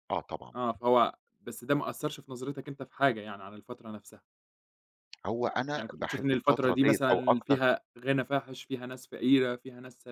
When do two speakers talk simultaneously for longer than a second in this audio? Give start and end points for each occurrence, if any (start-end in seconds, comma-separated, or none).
5.8-7.6